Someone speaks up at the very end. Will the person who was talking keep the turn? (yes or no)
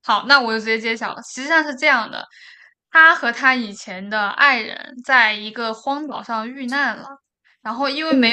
yes